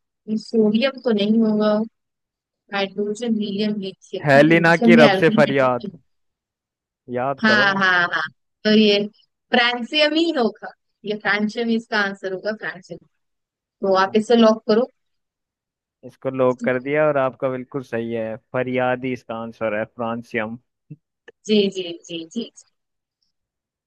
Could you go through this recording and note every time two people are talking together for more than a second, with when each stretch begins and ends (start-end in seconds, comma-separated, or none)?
4.3-5.9